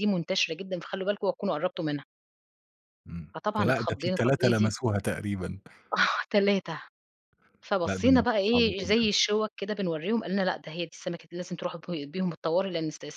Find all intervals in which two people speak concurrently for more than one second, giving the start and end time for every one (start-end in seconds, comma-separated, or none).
3.3-4.7, 7.8-9.1